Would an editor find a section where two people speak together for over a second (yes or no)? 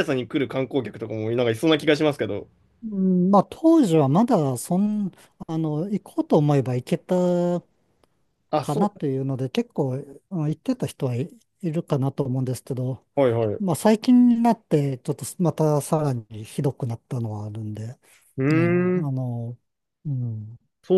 no